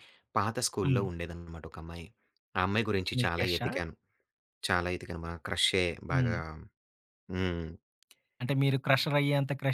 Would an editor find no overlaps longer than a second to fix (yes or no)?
yes